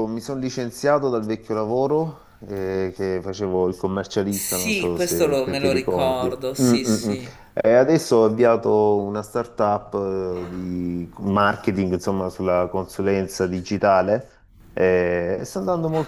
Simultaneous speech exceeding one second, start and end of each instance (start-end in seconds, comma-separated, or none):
4.3-7.1